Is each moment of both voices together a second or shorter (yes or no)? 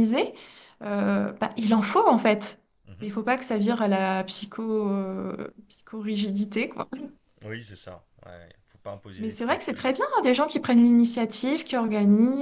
yes